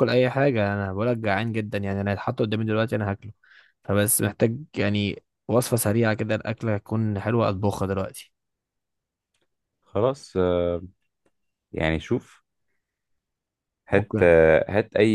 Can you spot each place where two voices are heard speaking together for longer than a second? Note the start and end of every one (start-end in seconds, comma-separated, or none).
none